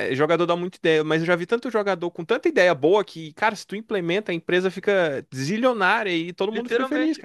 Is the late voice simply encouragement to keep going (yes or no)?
no